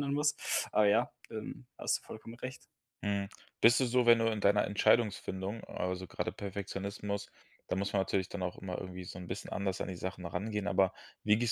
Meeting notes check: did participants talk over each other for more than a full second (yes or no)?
no